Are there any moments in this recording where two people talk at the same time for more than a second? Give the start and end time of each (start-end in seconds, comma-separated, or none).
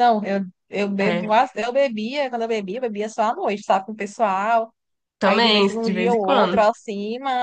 5.2-6.6